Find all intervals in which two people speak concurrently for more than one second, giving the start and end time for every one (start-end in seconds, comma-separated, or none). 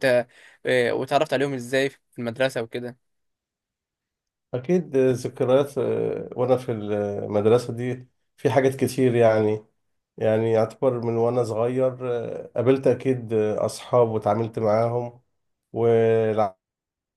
none